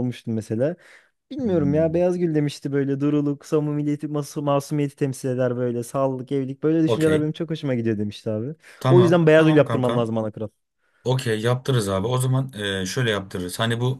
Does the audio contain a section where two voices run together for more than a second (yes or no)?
yes